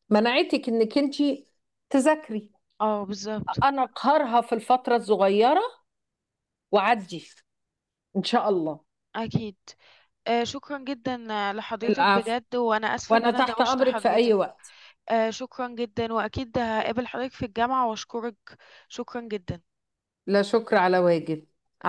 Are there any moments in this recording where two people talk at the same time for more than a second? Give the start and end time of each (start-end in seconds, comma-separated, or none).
13.1-14.3